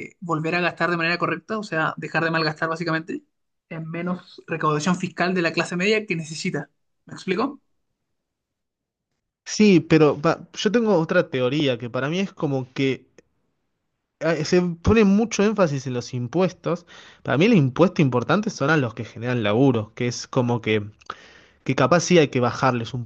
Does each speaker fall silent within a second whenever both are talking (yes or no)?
yes